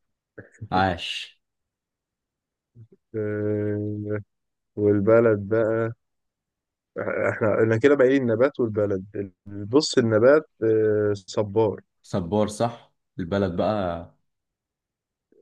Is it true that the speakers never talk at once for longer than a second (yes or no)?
yes